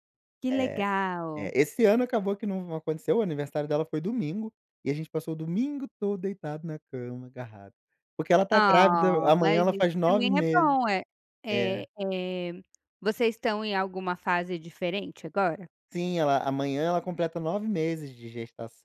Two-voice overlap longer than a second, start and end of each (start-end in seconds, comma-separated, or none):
8.5-10.8